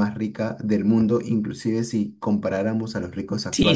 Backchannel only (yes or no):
no